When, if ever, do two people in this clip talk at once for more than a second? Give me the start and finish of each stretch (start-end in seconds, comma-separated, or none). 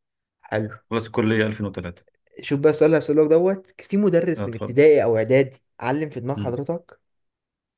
none